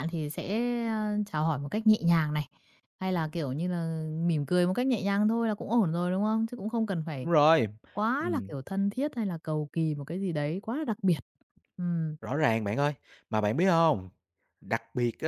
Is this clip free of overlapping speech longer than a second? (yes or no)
yes